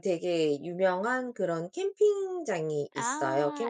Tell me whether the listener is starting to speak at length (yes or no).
no